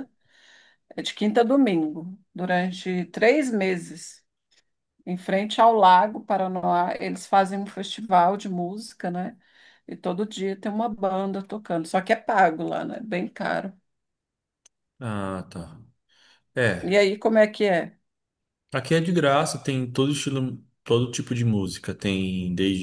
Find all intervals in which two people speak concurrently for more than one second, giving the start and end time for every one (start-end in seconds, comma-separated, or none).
none